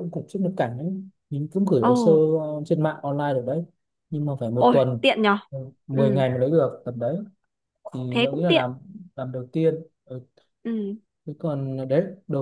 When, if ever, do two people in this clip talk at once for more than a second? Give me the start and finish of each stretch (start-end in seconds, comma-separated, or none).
none